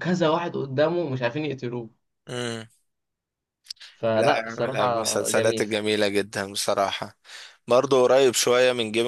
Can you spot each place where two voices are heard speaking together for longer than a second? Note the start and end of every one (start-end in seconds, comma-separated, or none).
4.2-5.7